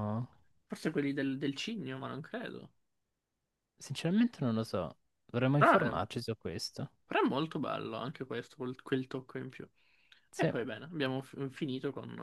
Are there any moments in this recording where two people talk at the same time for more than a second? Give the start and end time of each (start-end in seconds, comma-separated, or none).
none